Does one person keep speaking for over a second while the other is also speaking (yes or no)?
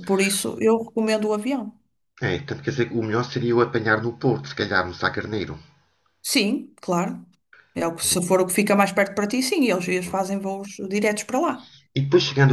no